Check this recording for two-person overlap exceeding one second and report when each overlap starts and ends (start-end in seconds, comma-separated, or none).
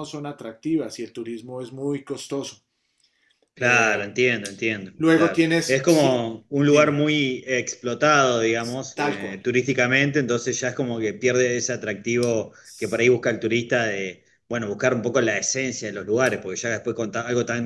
4.9-7.1